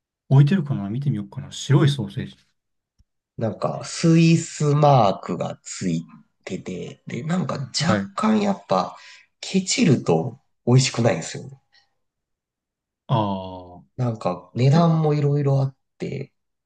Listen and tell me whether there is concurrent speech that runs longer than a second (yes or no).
no